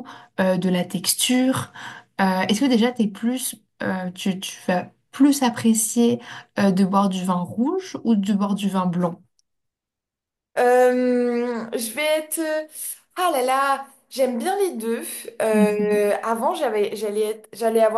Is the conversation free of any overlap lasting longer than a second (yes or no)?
yes